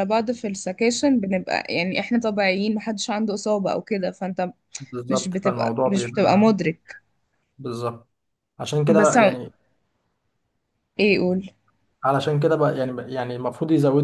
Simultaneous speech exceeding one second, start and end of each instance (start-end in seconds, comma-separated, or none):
5.1-6.5